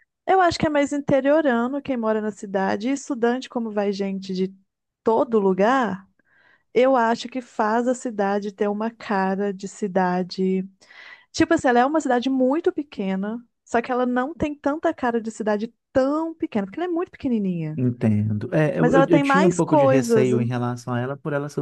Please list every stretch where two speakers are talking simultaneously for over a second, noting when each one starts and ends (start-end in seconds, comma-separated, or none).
18.8-20.3